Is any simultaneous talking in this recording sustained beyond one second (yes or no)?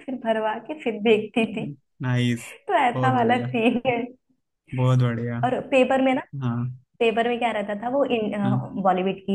no